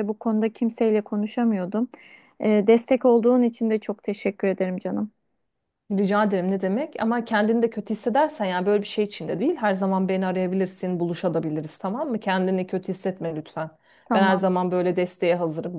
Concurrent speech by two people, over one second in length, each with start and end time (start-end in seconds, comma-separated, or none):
none